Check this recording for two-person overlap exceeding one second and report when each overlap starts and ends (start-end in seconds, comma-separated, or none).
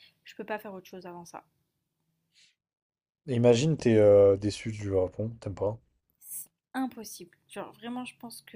none